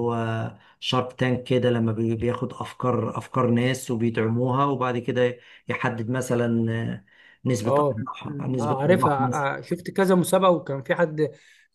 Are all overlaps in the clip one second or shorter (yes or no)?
no